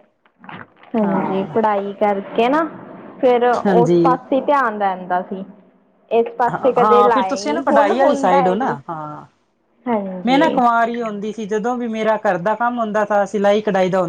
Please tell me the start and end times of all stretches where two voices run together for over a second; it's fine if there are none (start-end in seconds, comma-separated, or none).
6.5-8.8